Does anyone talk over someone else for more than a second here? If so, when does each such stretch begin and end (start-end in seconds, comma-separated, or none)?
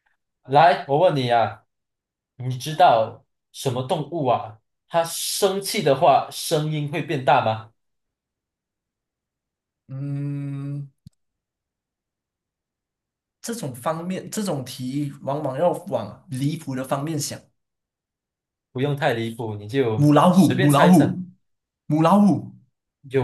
19.9-21.2